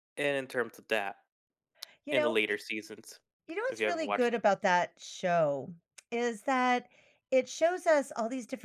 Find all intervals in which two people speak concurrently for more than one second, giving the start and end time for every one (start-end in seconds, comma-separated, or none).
none